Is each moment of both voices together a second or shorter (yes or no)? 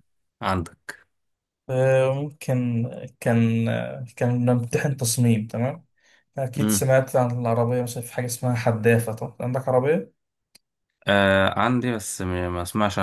yes